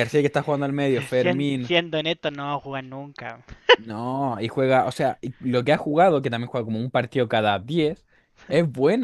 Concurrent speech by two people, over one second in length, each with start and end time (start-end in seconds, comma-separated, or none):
none